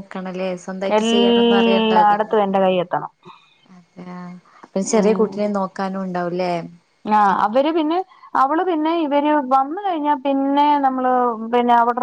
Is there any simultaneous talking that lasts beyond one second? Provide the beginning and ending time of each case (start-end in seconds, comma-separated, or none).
1.0-2.4